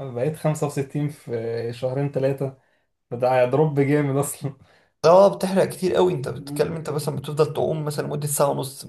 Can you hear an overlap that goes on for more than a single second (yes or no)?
no